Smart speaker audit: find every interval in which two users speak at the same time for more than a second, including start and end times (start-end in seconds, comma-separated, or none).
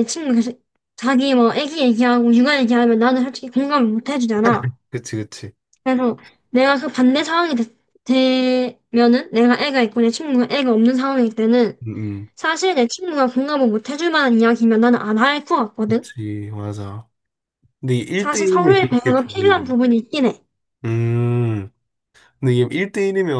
18.1-19.7